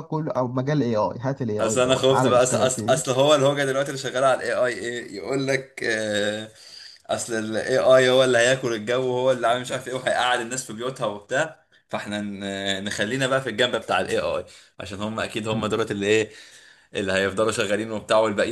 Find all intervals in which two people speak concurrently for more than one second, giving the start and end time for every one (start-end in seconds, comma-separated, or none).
1.6-3.0